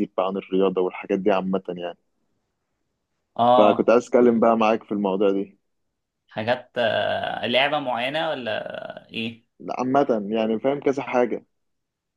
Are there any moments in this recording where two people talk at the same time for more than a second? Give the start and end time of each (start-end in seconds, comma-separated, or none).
none